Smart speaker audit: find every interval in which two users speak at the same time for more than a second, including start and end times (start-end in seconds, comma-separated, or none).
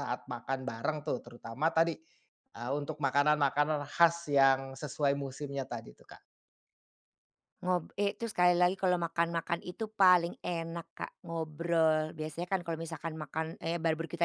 none